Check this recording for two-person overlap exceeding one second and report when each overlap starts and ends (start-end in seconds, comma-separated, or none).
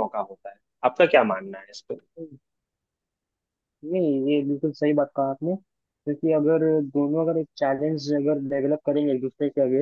none